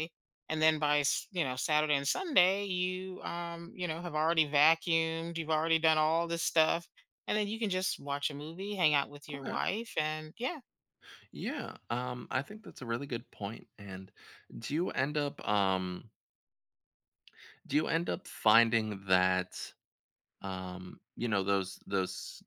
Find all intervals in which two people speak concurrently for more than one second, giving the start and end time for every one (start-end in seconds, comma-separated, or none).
none